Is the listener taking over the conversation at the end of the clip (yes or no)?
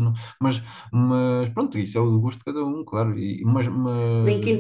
yes